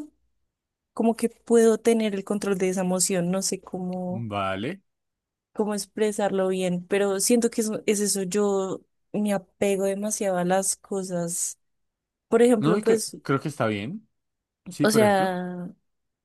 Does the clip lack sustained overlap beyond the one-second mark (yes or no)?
yes